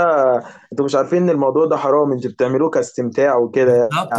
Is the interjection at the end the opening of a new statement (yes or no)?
yes